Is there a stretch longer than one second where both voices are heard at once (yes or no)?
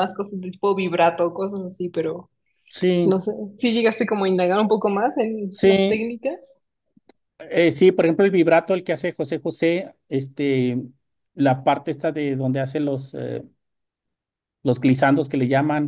no